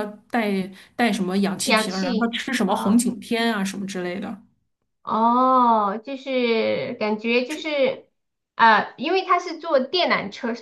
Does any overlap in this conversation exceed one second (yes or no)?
yes